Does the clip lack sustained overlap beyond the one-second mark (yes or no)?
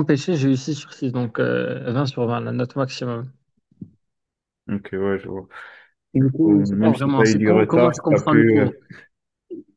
no